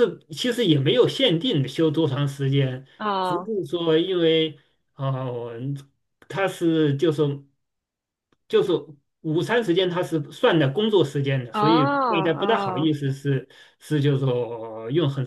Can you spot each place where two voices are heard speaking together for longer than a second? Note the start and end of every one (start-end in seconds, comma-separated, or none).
11.5-13.0